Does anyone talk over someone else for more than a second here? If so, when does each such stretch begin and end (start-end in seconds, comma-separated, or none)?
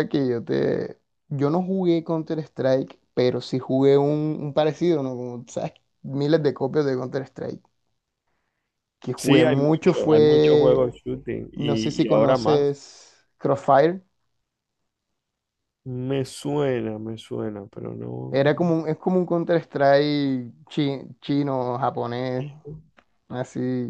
9.2-10.8, 11.6-12.8